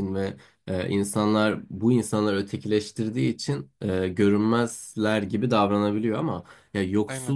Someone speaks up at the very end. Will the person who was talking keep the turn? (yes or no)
yes